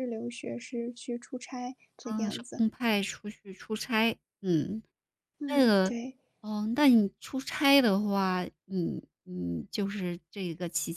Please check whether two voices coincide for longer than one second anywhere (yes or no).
no